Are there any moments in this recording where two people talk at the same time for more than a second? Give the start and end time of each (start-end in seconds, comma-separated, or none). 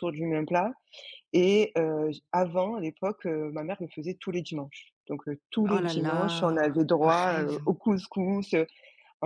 5.7-7.6